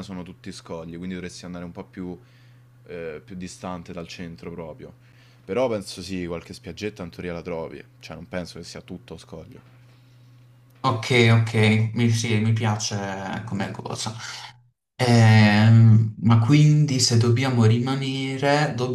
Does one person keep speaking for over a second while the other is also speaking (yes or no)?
no